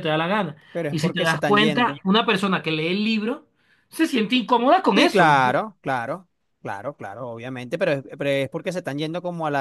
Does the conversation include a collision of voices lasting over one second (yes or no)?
yes